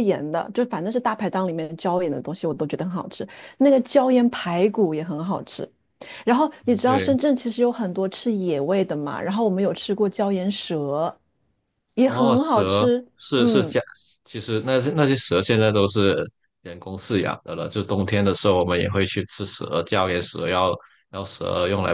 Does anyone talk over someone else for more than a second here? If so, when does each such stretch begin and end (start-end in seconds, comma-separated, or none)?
12.0-13.7